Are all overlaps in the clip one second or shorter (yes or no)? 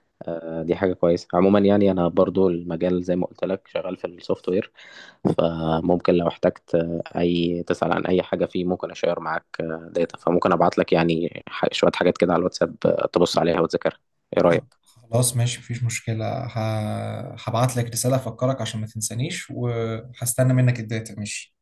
yes